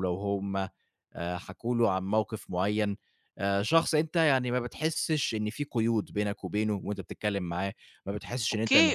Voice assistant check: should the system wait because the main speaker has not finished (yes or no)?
no